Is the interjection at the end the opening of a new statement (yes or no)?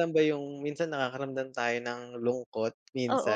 yes